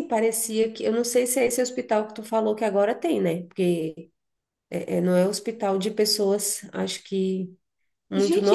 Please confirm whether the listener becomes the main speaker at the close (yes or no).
yes